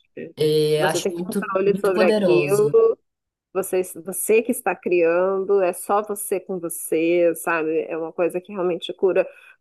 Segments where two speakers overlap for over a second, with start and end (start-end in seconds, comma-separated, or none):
0.8-2.7